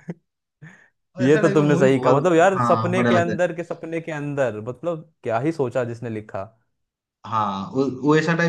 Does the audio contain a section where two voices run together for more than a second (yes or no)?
yes